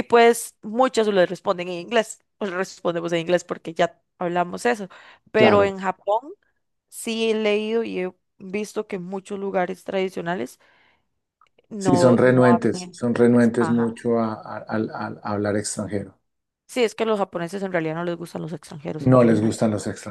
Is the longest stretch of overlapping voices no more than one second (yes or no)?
no